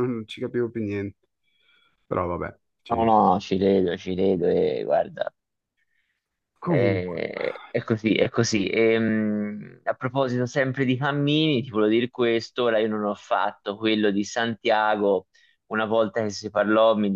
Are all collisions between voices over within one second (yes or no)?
yes